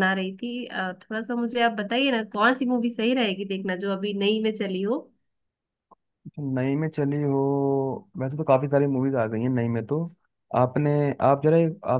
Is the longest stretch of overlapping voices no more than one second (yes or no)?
yes